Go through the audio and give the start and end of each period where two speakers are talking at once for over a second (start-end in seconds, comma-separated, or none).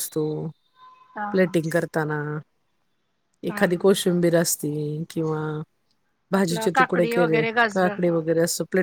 6.4-8.2